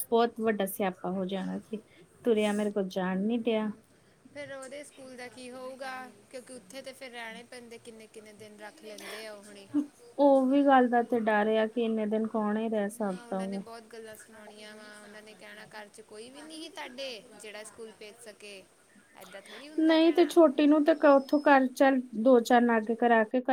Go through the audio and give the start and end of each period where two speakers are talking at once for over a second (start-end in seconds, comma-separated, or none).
none